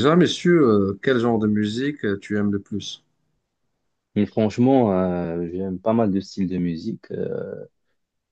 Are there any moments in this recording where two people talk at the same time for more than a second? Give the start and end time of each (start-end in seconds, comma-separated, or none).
none